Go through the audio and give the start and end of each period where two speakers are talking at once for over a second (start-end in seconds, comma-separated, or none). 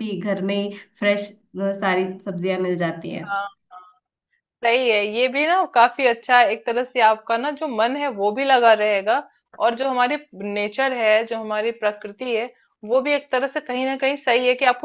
none